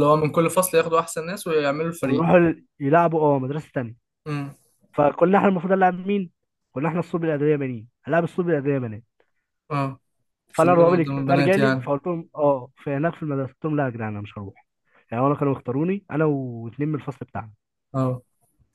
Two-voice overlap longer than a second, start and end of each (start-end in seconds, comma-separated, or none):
10.6-11.9